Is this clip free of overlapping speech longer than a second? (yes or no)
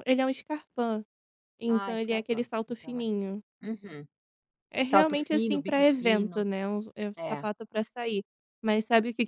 no